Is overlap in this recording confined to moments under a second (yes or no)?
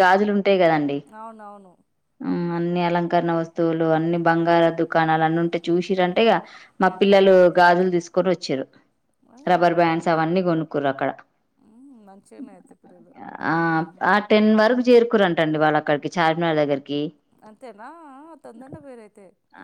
yes